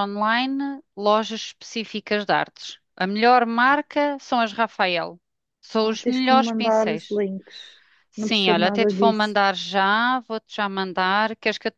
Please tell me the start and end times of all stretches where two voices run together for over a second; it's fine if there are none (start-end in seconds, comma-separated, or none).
5.8-7.2, 8.1-9.4